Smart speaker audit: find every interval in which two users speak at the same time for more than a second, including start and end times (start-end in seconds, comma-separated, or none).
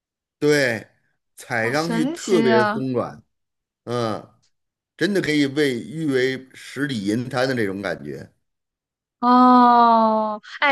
1.5-2.8